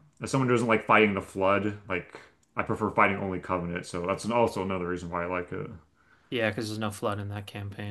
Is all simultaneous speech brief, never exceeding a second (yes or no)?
yes